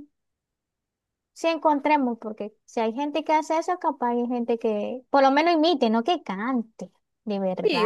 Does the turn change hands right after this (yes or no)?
yes